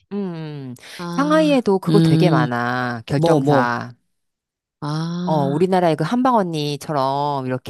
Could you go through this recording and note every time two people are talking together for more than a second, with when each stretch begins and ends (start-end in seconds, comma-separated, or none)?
1.1-2.5